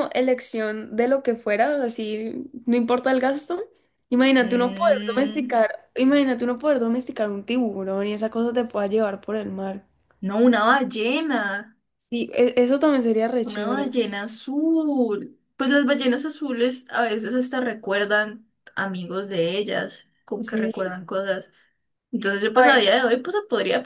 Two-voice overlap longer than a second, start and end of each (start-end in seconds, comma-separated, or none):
4.4-5.6